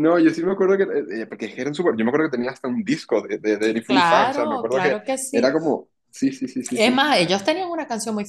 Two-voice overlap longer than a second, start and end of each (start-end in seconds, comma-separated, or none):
3.9-5.4